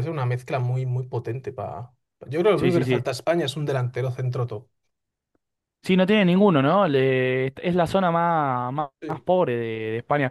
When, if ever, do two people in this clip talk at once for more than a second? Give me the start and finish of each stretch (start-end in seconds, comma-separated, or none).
none